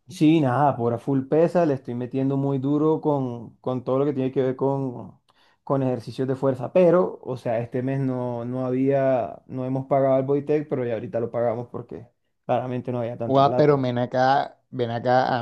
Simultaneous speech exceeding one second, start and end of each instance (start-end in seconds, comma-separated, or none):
none